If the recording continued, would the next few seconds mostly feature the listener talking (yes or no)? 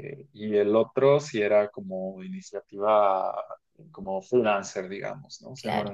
no